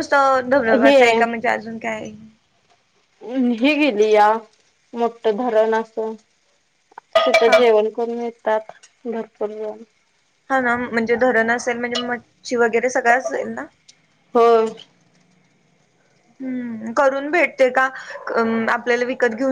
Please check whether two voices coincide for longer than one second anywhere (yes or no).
no